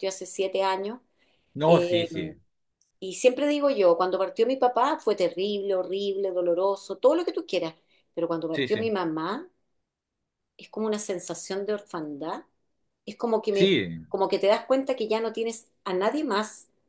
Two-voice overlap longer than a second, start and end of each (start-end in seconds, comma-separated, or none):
none